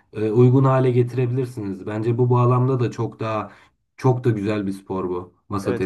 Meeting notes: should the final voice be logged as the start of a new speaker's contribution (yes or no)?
yes